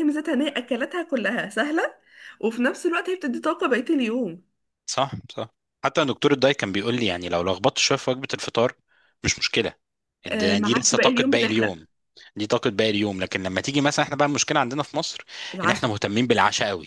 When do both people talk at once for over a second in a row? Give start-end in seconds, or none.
10.3-11.8